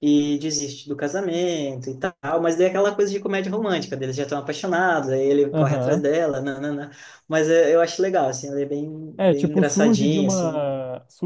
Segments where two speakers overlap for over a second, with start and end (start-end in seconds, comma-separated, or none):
9.2-10.7